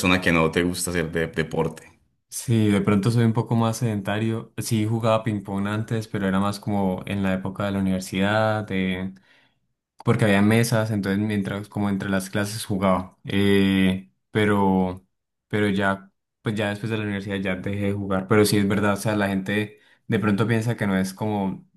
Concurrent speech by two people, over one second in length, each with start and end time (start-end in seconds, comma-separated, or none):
none